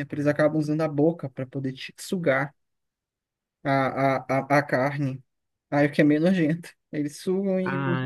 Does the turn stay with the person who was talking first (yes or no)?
no